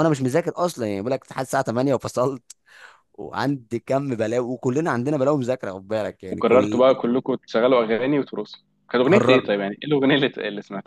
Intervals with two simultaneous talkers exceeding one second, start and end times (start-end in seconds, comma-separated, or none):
none